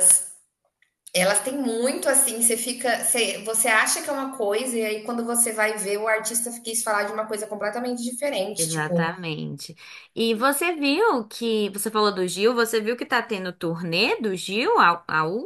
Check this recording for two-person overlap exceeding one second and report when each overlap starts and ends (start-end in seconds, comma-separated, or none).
none